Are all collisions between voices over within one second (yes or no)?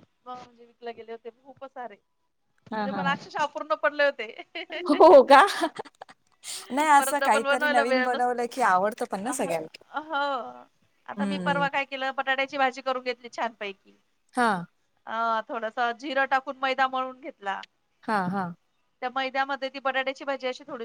no